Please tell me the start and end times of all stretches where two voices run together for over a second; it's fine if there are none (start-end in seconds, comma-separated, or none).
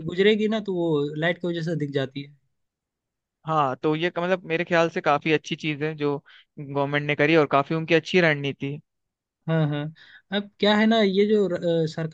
none